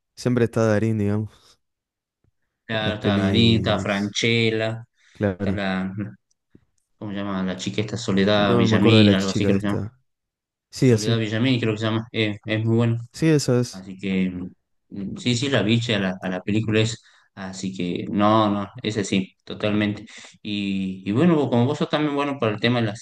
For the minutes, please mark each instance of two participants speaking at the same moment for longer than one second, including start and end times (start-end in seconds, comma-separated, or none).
2.7-4.2, 8.3-9.8